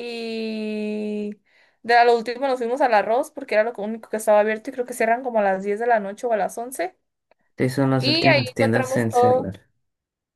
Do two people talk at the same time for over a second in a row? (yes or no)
yes